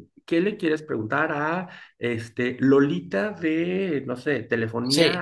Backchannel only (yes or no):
yes